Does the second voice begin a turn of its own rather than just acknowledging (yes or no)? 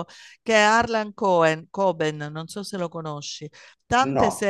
no